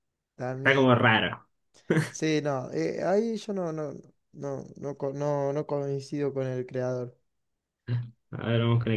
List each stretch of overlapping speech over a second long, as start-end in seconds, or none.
none